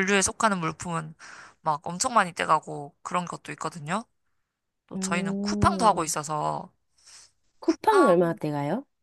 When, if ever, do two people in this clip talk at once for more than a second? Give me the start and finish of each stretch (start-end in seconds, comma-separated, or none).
4.9-6.1